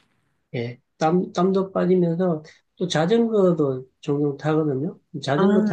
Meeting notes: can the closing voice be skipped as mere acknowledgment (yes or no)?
yes